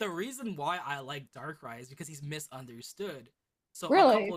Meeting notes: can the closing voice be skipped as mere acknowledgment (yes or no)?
yes